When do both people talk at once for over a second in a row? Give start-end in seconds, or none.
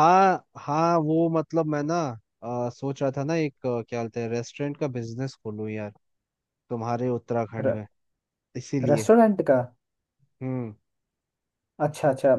none